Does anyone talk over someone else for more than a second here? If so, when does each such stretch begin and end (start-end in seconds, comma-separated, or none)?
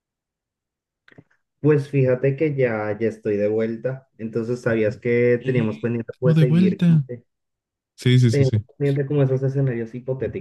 5.4-7.0